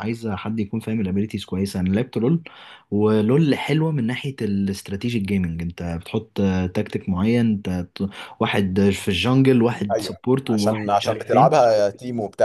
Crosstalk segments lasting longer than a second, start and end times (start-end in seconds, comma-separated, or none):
9.9-11.6